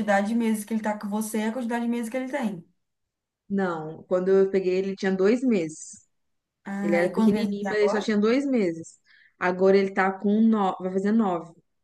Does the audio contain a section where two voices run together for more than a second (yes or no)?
yes